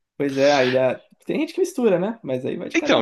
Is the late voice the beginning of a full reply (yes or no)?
yes